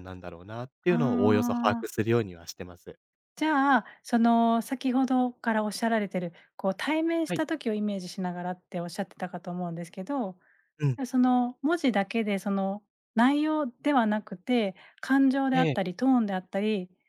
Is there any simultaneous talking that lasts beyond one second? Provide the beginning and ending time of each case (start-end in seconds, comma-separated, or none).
0.9-2.1